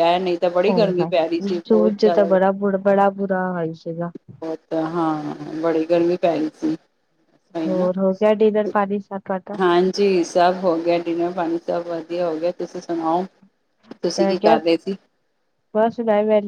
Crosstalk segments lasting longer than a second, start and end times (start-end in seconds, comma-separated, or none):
0.6-2.3